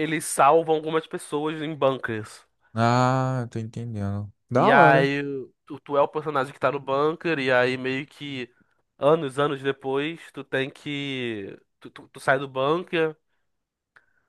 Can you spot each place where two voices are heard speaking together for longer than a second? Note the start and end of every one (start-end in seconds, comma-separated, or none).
none